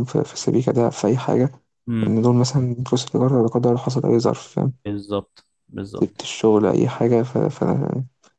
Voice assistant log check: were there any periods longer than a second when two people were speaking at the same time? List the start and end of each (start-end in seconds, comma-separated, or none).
none